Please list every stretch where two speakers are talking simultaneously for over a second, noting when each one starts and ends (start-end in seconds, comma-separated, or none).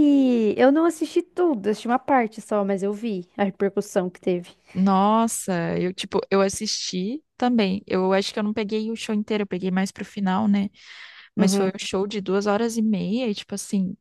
none